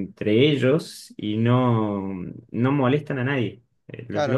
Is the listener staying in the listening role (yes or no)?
no